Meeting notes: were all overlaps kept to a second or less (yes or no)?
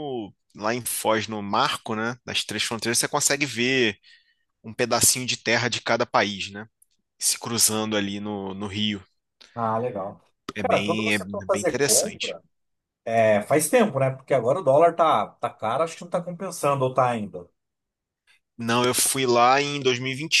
no